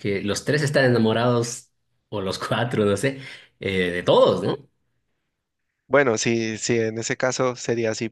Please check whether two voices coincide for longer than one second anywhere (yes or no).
no